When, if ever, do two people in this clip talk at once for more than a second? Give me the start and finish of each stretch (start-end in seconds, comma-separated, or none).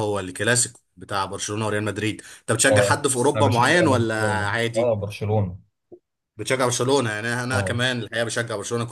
2.7-5.0